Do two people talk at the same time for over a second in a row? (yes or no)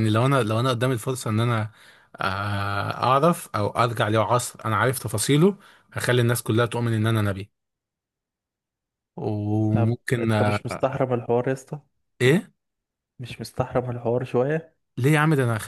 yes